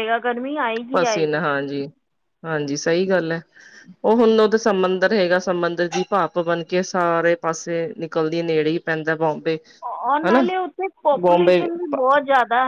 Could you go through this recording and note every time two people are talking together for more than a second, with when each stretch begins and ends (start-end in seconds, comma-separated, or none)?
none